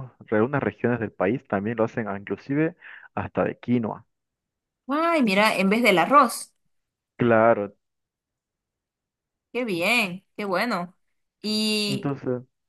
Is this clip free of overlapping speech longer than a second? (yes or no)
yes